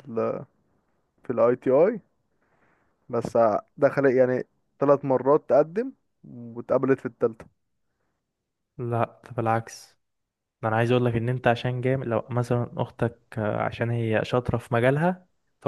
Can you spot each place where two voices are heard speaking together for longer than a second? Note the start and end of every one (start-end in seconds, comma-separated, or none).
none